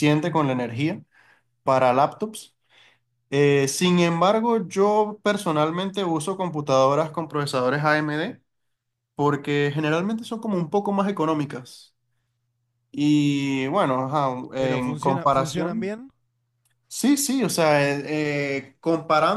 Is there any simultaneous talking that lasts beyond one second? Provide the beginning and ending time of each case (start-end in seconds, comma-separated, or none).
14.6-15.9